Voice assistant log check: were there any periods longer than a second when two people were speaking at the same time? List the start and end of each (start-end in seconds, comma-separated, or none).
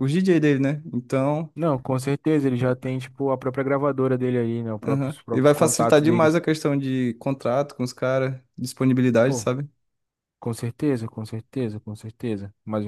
4.8-6.4